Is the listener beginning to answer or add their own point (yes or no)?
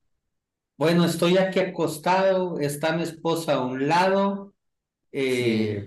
no